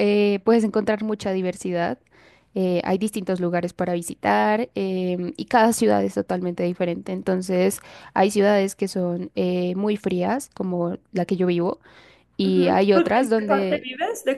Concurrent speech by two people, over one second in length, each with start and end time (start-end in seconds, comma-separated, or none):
12.4-13.9